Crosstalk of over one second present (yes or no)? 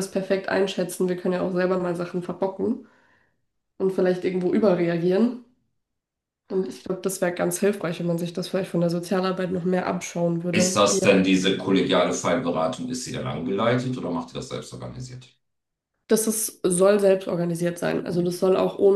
no